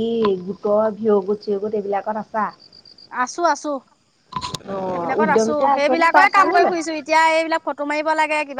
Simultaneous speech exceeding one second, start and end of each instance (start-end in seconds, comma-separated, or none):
4.9-6.8